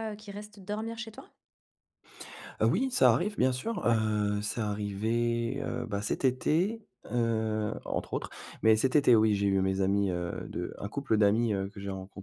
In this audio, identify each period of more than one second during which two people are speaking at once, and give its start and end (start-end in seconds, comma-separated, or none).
none